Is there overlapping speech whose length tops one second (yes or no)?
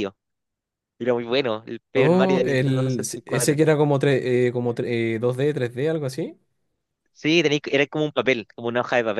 yes